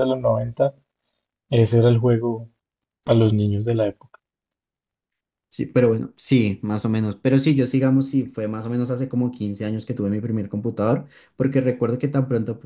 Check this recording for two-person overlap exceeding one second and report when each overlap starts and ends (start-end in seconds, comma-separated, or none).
none